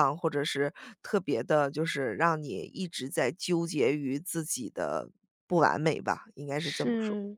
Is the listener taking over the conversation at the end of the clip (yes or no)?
yes